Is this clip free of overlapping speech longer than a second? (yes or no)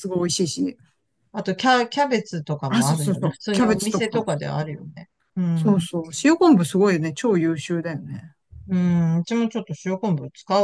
no